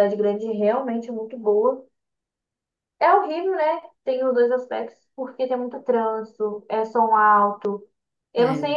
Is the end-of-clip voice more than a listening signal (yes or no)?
no